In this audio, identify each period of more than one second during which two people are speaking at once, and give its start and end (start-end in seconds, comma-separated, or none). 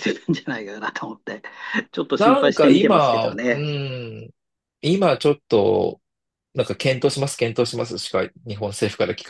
2.2-3.7